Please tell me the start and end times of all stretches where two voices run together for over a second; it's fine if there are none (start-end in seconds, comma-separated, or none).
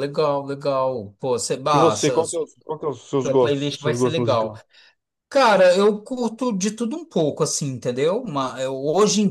2.9-4.5